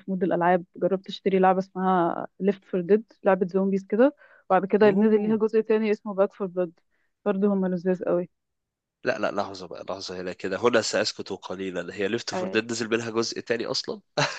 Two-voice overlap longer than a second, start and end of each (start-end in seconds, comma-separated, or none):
none